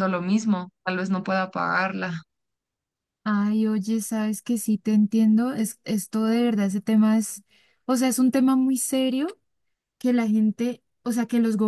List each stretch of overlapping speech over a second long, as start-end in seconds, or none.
none